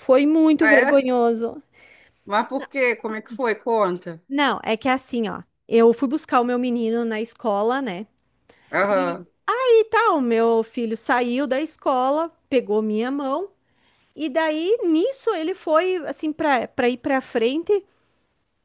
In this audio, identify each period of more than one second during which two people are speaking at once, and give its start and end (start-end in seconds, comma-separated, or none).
none